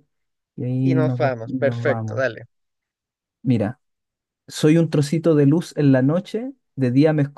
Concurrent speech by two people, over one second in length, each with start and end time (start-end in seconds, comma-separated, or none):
0.8-2.2